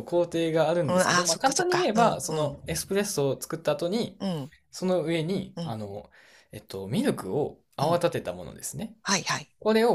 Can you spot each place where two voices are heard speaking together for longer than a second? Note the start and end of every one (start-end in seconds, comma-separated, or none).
0.8-2.6